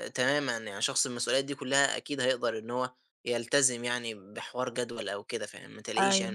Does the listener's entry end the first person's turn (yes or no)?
yes